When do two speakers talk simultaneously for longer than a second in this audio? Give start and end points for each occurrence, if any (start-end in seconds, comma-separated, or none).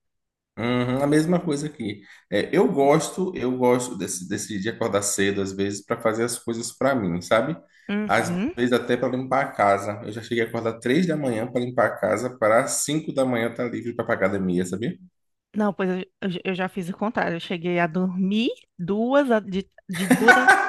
none